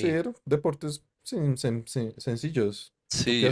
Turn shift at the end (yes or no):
yes